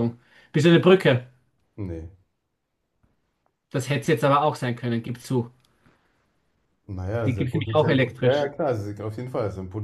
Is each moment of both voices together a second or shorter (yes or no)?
no